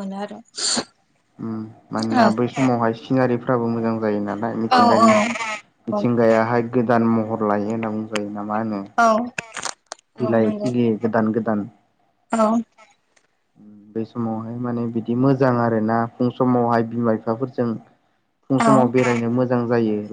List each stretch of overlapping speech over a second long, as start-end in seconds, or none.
4.8-6.0